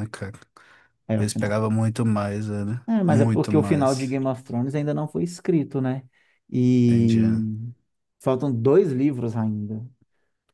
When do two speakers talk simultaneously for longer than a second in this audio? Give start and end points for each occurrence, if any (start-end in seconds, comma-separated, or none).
2.9-4.2